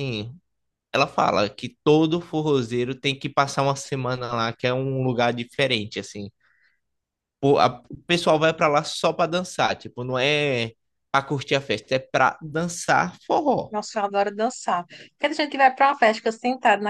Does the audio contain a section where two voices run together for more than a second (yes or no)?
no